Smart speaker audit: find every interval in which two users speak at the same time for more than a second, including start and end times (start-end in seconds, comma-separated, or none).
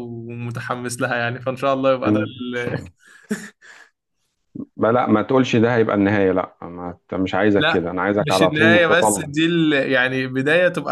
7.6-9.3